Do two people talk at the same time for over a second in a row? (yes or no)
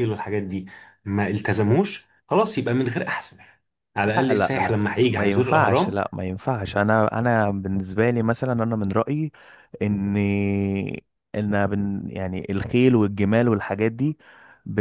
yes